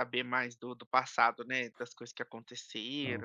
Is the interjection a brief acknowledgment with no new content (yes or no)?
yes